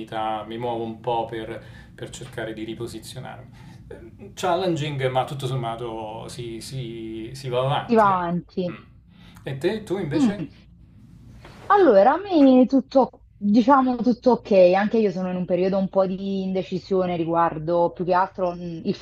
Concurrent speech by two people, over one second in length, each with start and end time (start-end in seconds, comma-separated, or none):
none